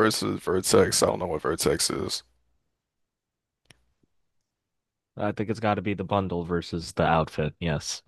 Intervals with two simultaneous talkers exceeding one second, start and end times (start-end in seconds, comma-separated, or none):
none